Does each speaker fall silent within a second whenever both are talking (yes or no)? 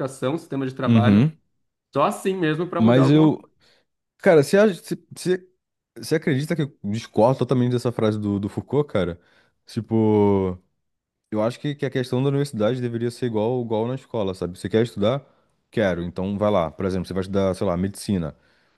yes